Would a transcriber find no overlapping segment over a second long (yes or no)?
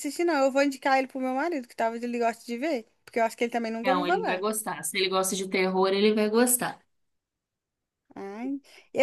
yes